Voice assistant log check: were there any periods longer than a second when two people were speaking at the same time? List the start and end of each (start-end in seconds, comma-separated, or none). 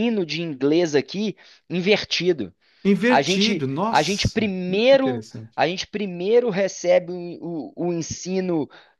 3.1-5.6